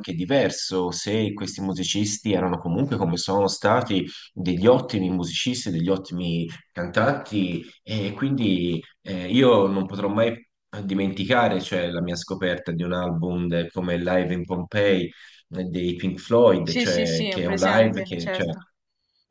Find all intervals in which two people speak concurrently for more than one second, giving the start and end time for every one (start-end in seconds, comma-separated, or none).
16.6-18.5